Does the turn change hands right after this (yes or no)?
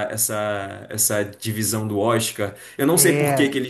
no